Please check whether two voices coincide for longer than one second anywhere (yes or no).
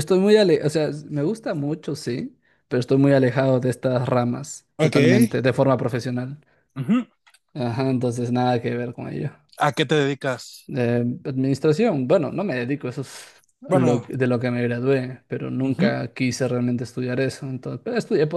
no